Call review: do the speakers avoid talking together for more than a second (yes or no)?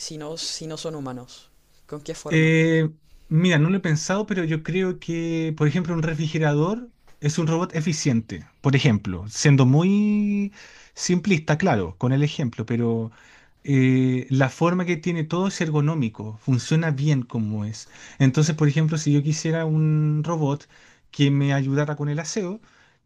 yes